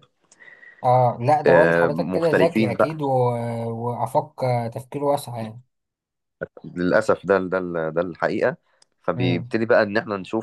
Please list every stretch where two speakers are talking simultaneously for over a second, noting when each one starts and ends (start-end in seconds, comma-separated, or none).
1.5-2.8